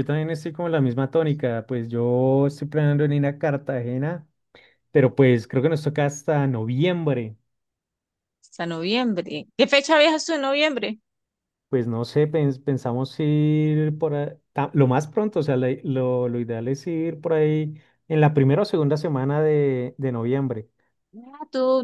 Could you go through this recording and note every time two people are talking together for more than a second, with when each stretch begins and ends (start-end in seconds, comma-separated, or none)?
none